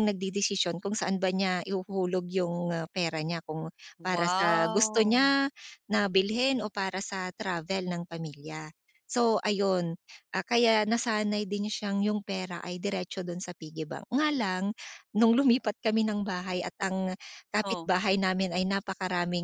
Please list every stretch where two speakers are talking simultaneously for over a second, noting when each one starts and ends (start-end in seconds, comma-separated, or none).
4.0-5.3